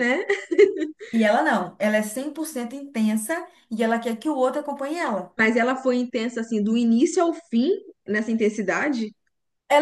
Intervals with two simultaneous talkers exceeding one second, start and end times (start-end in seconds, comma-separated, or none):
none